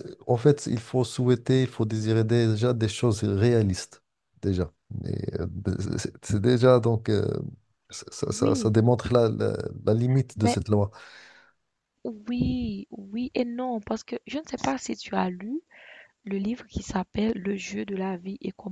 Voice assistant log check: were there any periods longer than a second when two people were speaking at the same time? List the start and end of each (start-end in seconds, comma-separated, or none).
none